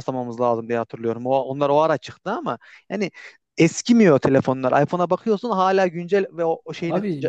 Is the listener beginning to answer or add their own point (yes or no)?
no